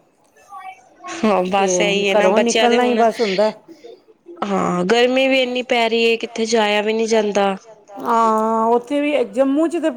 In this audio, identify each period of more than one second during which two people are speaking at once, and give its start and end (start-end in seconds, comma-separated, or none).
1.6-3.0